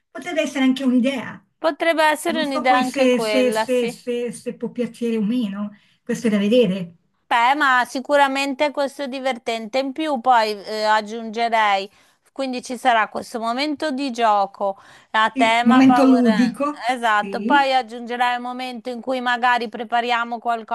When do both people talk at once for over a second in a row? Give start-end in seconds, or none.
2.2-4.0, 15.3-17.7